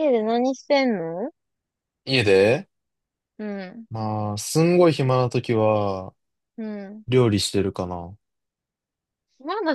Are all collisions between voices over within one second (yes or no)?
yes